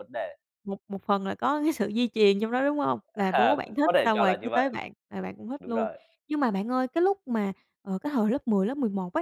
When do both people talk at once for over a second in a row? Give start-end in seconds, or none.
3.1-4.7